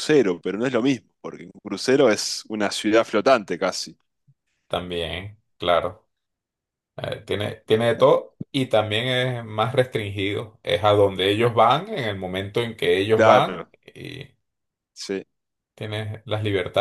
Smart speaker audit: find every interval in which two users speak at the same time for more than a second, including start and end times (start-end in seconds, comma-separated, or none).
none